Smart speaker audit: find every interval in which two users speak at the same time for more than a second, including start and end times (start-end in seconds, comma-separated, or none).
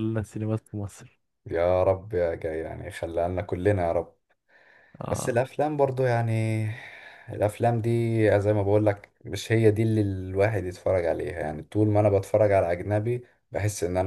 none